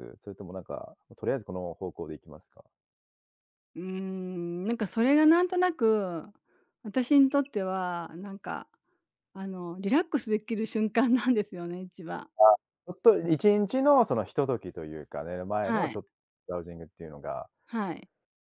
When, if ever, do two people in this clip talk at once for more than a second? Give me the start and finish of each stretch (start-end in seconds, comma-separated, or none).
none